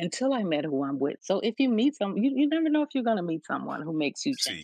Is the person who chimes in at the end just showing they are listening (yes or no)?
no